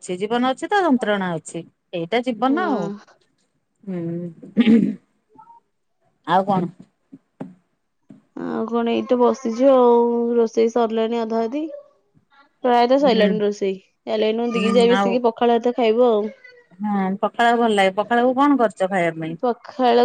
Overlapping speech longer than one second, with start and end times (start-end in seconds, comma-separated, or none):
none